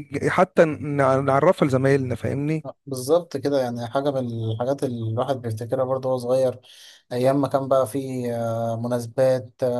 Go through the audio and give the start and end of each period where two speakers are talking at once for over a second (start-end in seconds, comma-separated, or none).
none